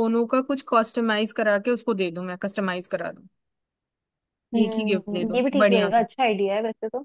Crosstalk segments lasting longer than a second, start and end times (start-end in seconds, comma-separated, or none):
4.6-6.0